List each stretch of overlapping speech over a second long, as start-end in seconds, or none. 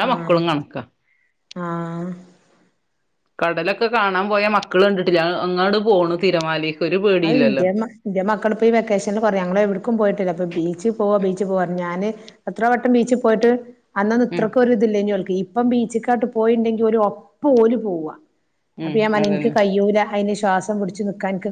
none